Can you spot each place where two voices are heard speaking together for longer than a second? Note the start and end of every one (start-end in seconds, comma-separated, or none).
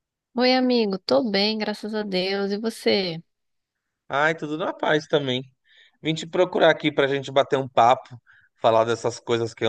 none